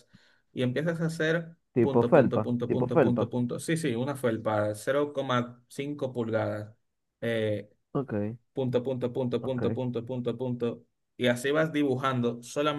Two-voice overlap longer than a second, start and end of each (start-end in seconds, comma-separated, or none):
1.7-3.3